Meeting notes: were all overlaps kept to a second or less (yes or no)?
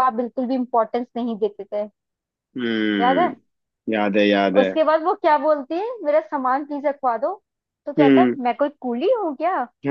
yes